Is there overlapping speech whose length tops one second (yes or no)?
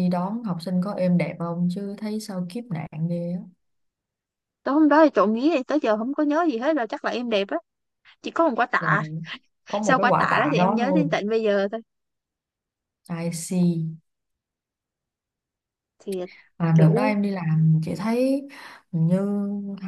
yes